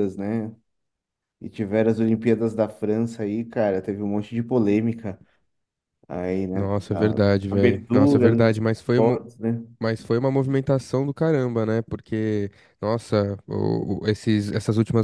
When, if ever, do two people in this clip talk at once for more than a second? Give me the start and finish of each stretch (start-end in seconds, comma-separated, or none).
6.5-9.2